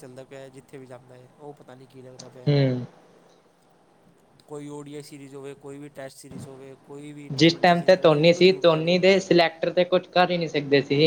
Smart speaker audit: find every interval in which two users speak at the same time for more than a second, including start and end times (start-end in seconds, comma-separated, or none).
7.4-9.1